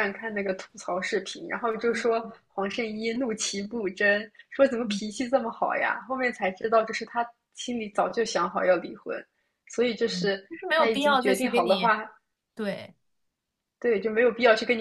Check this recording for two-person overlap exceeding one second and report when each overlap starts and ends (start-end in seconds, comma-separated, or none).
10.1-11.9